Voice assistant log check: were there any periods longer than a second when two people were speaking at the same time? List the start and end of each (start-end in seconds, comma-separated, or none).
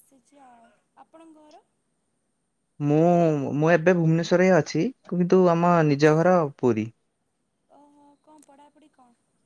none